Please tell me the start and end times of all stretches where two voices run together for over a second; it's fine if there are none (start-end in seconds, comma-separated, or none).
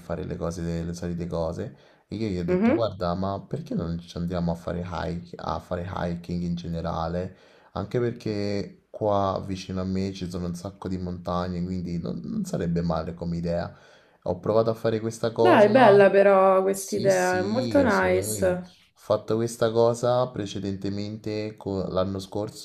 16.7-18.8